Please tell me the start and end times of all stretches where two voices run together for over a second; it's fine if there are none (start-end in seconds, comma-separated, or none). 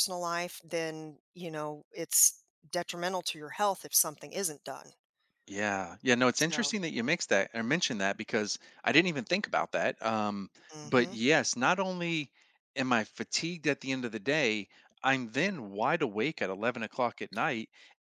none